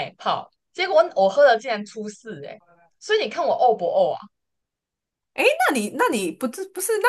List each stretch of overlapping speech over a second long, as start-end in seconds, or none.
none